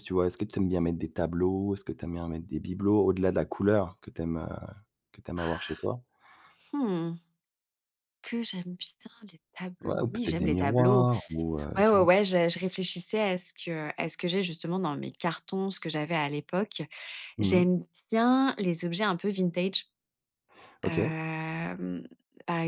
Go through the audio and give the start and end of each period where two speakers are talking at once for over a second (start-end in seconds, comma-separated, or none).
9.8-11.1